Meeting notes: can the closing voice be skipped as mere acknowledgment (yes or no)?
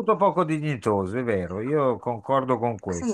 yes